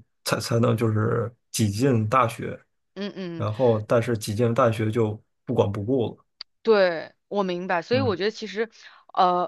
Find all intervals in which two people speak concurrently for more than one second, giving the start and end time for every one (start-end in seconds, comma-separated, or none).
none